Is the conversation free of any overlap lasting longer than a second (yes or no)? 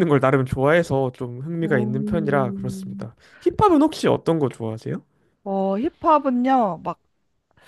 no